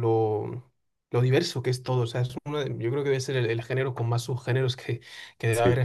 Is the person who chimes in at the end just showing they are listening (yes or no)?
yes